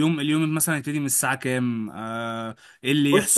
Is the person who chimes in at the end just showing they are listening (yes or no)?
no